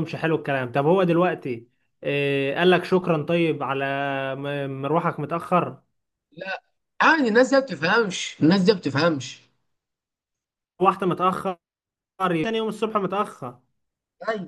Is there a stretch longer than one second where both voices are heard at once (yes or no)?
no